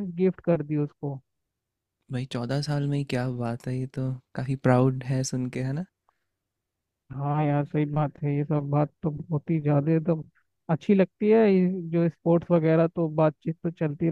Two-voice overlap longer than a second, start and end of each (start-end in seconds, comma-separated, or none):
none